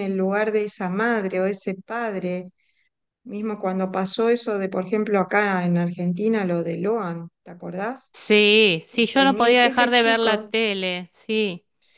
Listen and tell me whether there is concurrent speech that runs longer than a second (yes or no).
yes